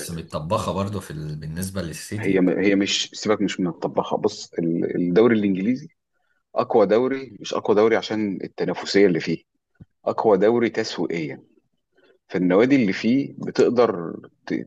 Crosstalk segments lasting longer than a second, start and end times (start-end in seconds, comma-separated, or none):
none